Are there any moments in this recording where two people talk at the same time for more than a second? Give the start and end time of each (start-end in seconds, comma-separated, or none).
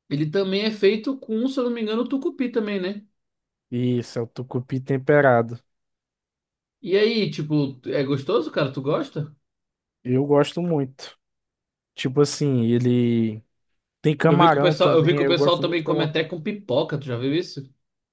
14.3-16.1